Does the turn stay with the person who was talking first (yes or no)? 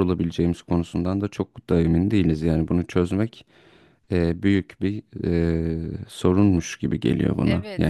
no